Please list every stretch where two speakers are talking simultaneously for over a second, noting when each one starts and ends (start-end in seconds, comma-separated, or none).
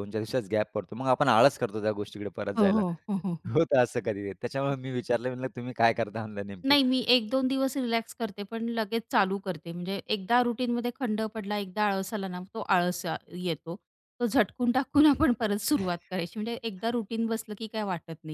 none